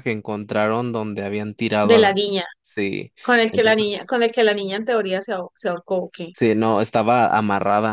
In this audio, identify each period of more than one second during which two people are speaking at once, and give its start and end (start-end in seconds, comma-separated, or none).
none